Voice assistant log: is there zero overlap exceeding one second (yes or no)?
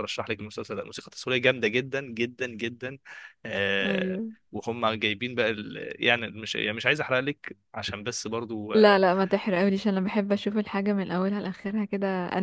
yes